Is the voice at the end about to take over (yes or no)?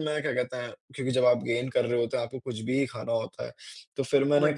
no